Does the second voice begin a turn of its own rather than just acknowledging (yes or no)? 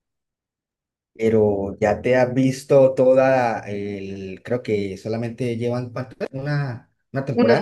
yes